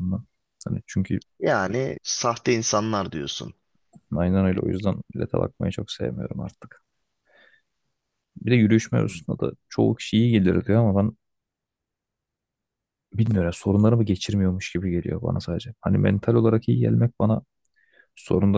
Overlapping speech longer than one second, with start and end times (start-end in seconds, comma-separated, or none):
none